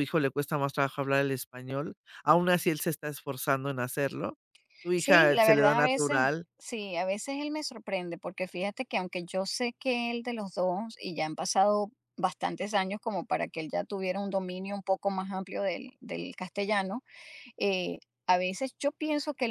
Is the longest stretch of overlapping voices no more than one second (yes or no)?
no